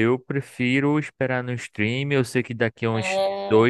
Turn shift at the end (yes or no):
no